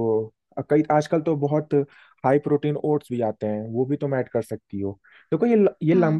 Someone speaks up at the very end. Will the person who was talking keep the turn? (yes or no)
yes